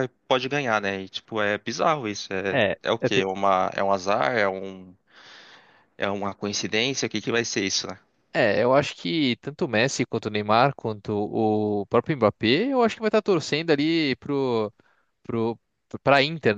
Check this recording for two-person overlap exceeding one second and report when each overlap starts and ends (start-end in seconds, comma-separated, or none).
none